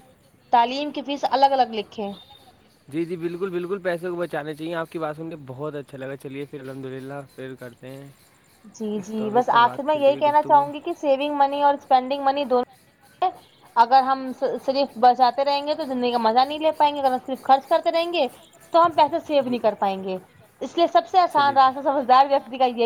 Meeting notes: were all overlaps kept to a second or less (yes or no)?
yes